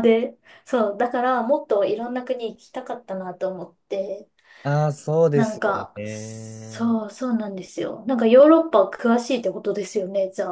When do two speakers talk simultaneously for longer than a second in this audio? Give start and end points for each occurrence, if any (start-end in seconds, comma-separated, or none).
5.3-7.0